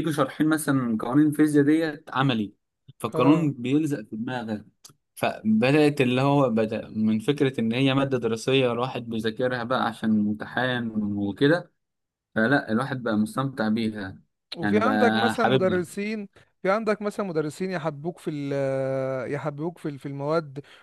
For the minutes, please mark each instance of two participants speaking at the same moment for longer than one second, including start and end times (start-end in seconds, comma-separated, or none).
14.6-15.9